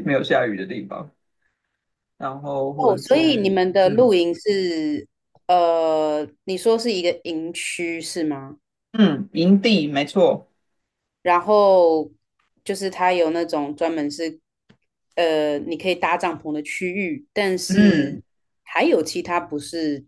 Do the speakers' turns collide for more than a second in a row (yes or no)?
yes